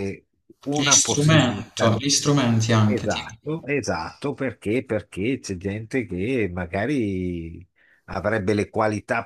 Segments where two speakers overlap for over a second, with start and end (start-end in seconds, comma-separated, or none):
0.7-2.0